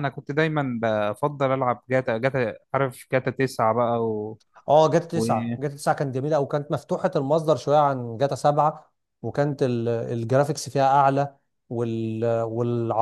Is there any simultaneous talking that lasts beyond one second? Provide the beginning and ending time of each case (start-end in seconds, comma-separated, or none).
none